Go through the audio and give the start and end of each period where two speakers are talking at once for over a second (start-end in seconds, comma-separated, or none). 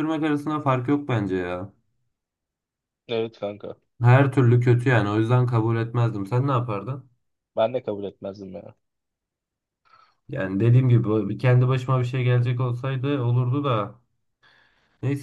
none